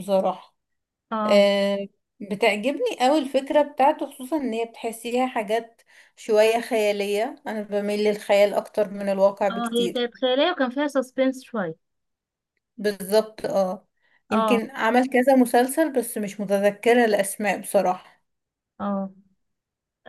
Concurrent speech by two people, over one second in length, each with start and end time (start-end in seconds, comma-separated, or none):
none